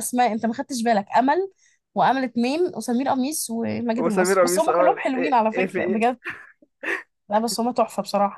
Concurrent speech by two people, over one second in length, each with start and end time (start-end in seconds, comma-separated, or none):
4.0-6.2